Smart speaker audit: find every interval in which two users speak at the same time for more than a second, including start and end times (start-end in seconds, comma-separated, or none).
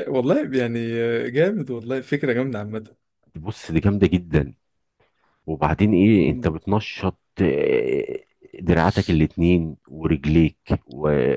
none